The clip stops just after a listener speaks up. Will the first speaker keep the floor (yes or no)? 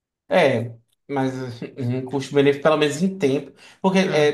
yes